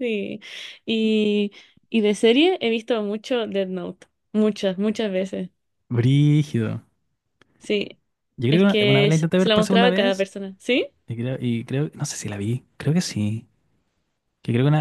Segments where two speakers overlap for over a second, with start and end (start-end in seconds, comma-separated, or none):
8.5-10.3